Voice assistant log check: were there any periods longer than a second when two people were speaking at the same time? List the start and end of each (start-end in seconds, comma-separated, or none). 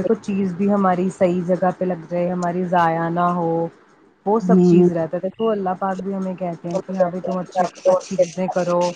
6.8-8.4